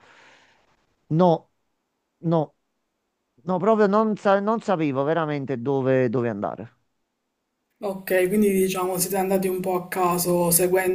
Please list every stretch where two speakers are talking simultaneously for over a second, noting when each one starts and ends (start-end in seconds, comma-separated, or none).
none